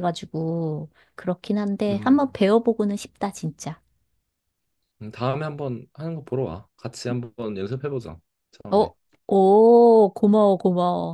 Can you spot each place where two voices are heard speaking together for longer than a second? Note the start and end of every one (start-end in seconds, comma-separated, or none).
none